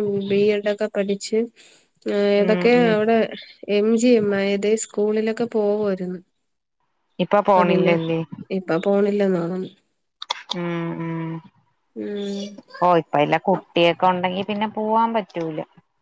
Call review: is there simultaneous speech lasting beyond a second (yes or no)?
no